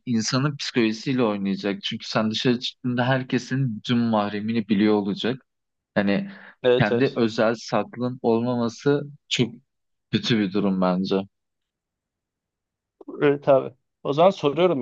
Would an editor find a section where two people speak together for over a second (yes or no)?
no